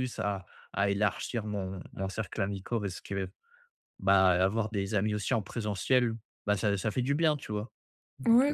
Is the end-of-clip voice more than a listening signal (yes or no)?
yes